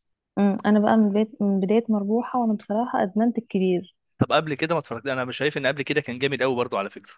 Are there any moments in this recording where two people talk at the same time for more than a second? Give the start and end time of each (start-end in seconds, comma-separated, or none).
none